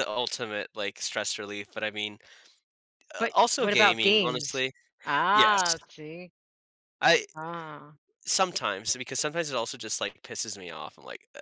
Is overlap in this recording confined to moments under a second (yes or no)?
no